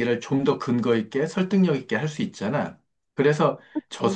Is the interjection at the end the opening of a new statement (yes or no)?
no